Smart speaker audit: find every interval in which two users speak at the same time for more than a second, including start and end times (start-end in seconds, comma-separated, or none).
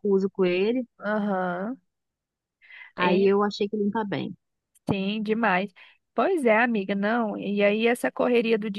none